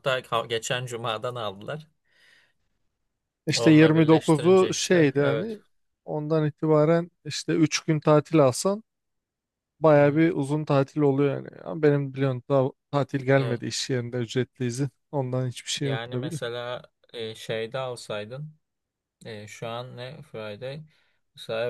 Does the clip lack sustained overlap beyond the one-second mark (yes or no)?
no